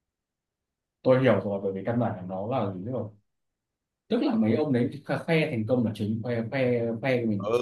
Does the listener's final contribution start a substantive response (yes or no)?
yes